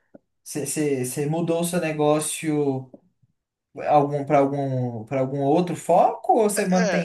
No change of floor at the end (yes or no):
no